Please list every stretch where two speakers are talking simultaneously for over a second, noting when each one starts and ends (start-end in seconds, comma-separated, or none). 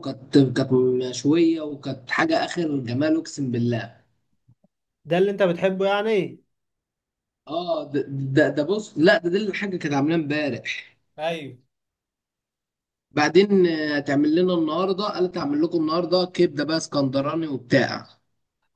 none